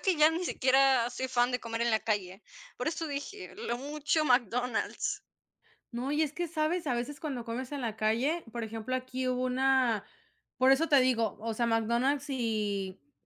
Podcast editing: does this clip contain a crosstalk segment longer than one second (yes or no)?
no